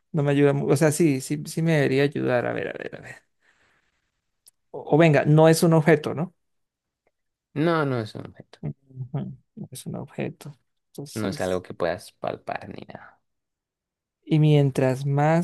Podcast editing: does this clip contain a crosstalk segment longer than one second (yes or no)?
no